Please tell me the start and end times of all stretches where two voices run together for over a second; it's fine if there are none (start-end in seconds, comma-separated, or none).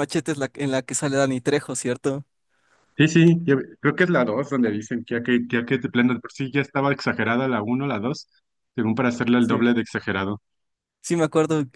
none